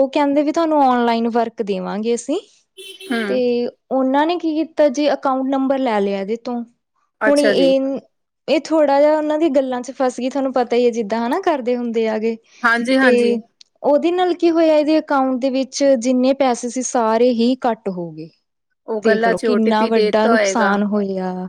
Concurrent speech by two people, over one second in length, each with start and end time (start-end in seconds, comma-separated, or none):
19.0-20.8